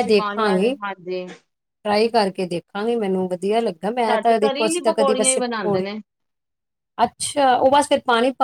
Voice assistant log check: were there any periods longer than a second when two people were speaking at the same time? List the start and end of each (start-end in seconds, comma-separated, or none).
4.1-5.8